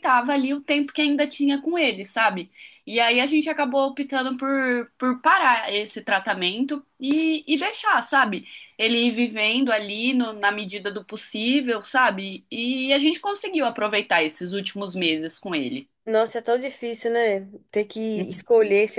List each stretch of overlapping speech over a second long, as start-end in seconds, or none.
none